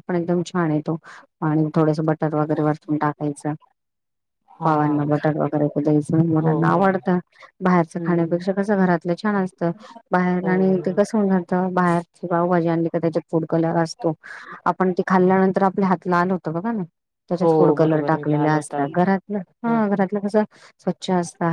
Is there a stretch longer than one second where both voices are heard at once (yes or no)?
yes